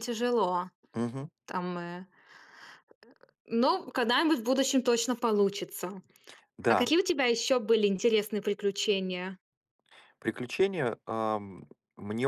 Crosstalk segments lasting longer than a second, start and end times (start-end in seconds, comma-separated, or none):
none